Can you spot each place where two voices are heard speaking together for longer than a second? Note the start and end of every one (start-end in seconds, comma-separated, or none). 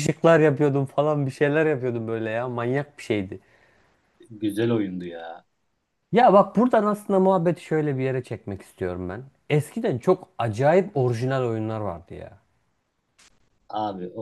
none